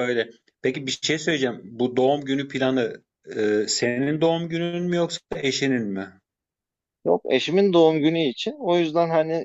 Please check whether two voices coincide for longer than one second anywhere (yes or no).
no